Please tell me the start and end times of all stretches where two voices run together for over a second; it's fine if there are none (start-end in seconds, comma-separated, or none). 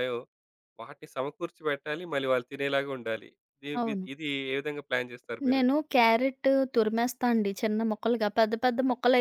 none